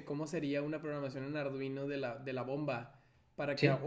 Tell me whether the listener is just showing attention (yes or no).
yes